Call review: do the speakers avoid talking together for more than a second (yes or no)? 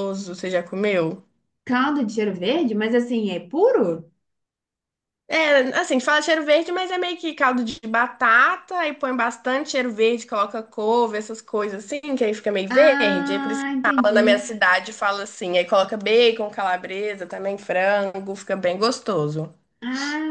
no